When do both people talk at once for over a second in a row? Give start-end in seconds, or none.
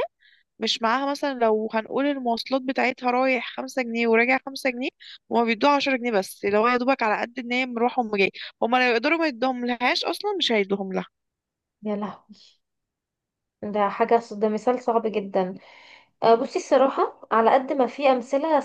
none